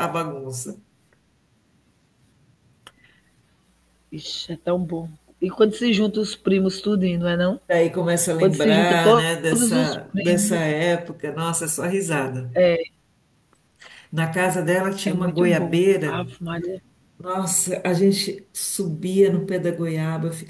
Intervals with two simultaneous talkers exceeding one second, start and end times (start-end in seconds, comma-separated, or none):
8.4-10.7, 15.0-16.3